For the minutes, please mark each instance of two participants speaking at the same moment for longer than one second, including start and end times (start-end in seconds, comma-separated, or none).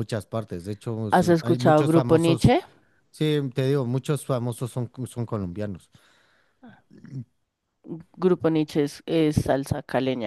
1.1-2.5